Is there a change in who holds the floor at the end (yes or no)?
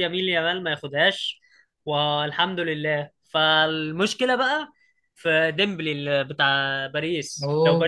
no